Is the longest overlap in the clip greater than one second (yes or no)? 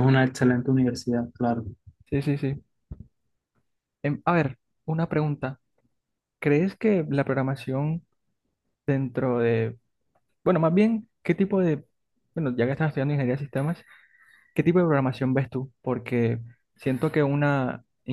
no